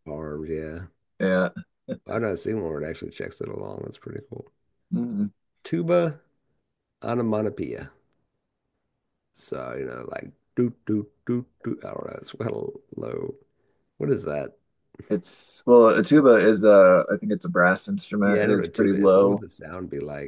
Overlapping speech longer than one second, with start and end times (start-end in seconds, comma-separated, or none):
18.2-19.4